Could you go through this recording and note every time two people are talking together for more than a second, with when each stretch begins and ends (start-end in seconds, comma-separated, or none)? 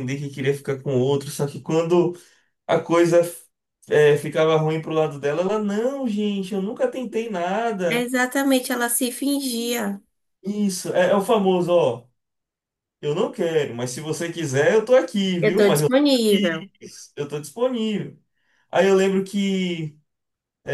15.4-16.7